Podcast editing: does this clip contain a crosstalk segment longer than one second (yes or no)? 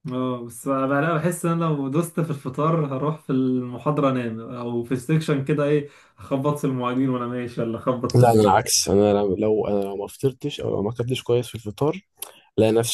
no